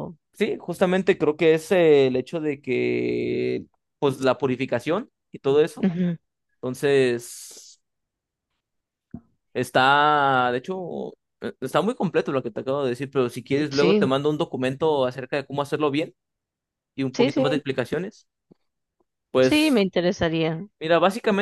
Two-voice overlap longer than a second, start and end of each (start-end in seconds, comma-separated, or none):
none